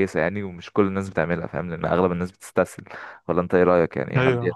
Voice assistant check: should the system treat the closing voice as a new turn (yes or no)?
yes